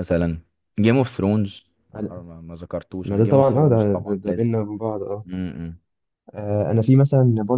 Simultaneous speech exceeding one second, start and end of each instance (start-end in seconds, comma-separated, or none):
3.0-4.5